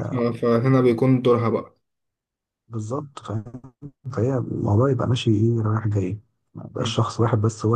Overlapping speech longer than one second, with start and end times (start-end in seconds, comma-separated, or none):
none